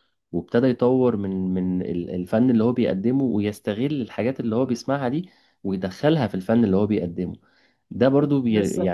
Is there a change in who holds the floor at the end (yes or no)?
no